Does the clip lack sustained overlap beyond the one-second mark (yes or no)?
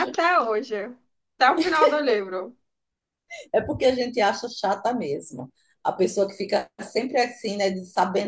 yes